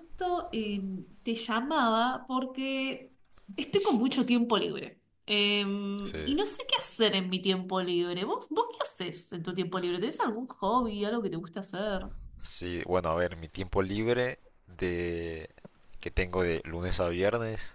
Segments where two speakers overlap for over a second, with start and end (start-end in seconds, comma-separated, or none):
none